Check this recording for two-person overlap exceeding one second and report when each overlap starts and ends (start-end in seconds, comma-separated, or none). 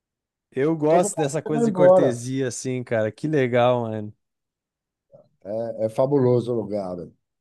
0.9-2.2